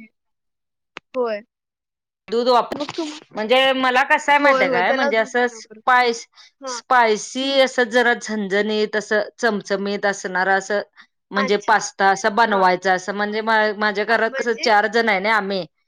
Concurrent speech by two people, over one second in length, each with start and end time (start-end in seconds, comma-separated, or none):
none